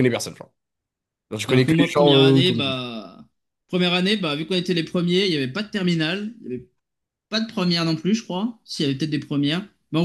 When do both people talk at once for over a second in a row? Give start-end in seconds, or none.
1.5-2.8